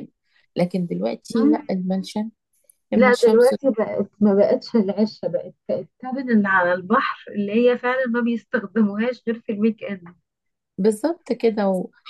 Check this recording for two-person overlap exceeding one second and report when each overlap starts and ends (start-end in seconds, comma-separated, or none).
none